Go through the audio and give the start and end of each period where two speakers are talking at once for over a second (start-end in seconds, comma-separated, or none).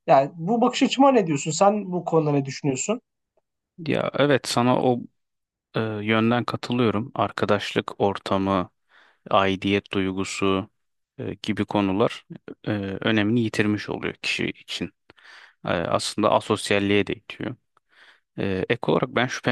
none